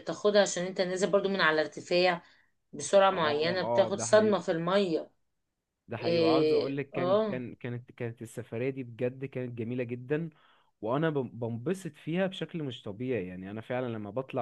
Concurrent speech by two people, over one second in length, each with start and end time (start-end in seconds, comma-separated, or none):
3.1-4.4, 6.0-7.5